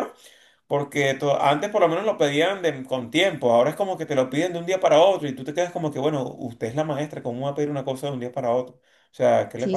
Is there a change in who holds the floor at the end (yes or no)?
yes